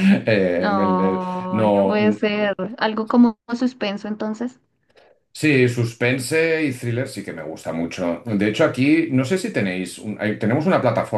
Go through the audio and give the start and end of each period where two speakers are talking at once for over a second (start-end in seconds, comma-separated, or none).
0.5-2.0